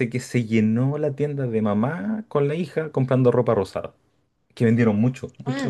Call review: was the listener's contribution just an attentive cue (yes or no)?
no